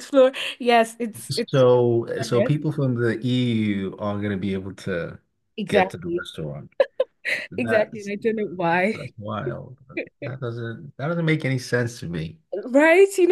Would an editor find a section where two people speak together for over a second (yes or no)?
no